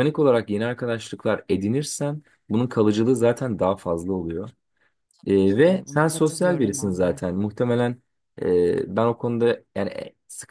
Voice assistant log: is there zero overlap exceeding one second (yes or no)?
no